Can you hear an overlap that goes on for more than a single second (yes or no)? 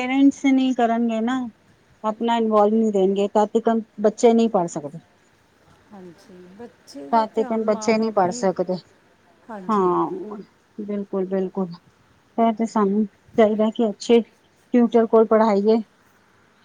yes